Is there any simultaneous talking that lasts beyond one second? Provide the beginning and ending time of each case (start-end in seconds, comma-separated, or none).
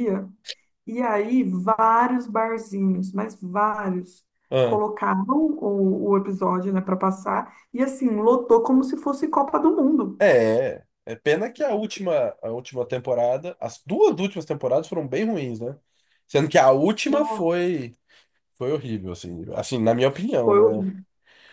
none